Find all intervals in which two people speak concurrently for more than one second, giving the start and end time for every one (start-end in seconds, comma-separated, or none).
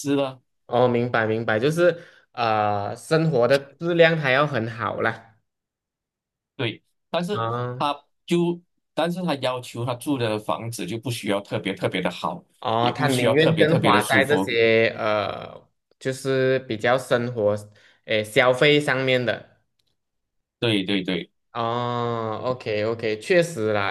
12.8-14.5